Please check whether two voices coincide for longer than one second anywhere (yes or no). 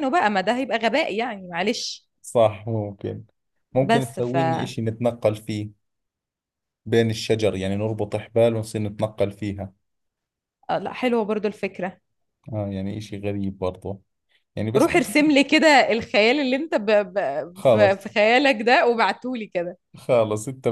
no